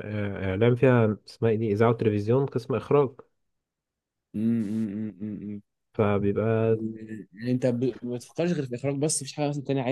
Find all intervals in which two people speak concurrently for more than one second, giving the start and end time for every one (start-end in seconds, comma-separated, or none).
none